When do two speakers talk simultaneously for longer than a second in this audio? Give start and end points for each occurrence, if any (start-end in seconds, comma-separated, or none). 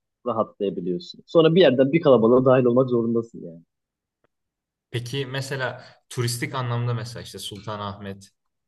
none